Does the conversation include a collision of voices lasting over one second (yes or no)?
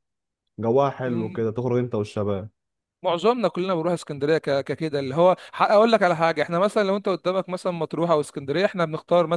no